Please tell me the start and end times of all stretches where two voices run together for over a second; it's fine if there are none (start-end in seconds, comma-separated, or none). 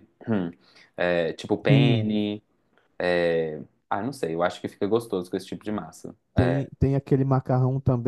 none